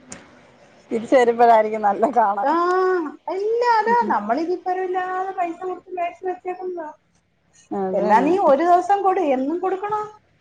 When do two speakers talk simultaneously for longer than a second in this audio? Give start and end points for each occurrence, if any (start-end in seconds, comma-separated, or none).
none